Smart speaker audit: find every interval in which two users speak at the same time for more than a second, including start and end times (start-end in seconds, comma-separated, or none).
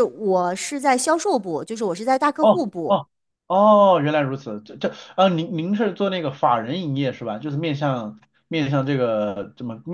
none